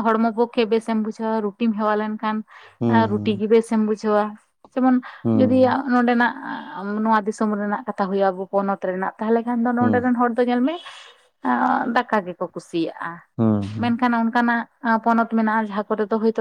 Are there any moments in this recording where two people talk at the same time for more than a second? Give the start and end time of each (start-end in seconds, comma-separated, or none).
none